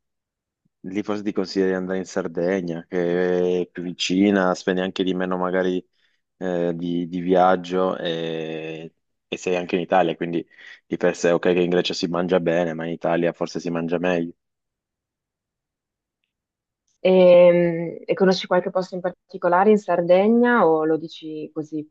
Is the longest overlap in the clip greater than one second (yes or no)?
no